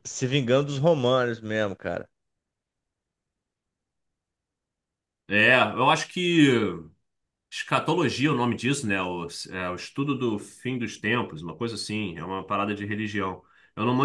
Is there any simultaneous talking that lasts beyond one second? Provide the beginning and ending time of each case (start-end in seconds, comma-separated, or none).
none